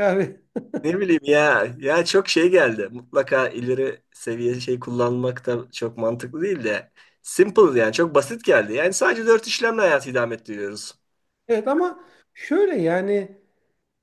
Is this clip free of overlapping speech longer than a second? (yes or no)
yes